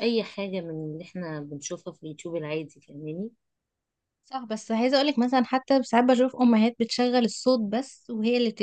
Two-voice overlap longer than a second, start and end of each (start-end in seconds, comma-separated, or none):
none